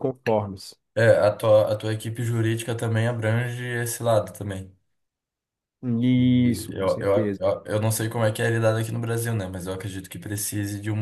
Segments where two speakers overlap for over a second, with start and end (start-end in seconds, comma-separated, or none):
6.1-7.4